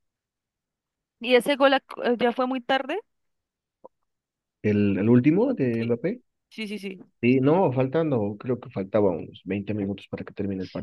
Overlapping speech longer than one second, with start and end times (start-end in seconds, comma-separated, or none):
none